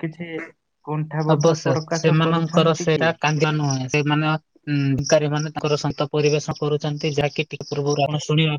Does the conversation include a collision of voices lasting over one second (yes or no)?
yes